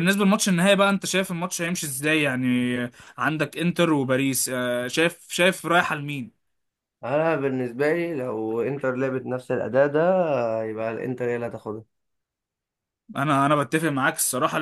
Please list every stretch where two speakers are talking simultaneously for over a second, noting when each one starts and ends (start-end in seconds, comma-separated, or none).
none